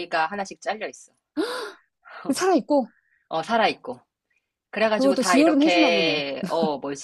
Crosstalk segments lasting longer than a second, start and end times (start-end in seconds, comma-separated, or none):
4.9-6.2